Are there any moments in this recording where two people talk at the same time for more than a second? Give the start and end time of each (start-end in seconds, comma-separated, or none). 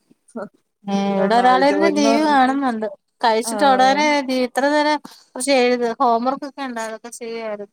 1.2-2.5